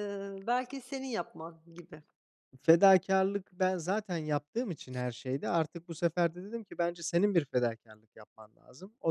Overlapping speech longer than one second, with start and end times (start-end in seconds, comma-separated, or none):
none